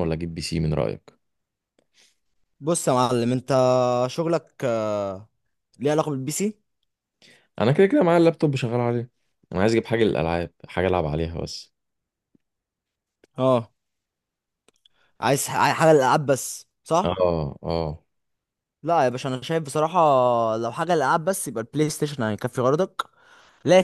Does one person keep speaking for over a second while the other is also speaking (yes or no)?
no